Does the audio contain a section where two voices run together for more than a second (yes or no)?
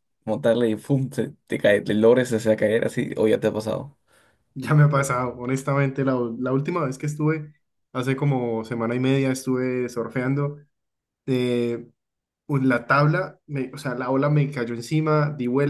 no